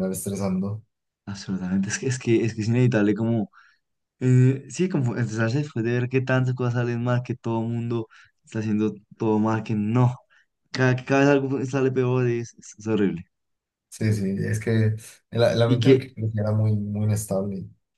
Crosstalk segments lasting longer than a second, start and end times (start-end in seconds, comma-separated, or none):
none